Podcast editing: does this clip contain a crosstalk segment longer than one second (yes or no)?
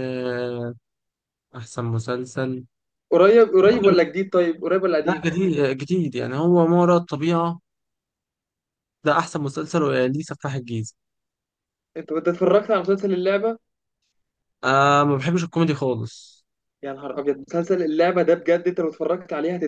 no